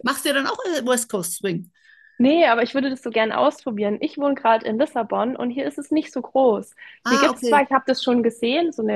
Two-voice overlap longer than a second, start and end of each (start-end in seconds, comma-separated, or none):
none